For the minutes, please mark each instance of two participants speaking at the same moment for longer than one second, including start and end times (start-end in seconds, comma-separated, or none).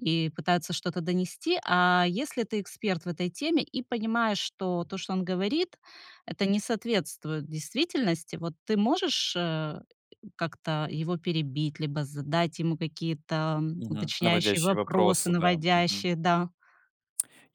13.8-16.1